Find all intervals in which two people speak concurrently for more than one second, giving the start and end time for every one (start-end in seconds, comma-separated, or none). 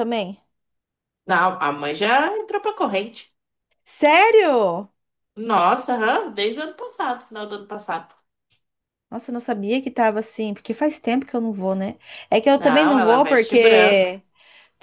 12.6-14.1